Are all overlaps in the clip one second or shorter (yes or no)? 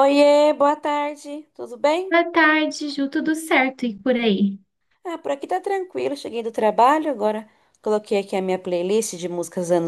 yes